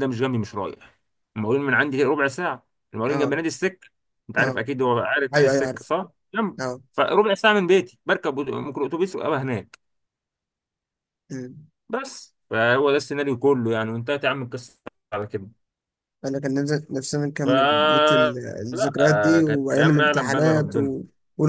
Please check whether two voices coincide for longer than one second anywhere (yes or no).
yes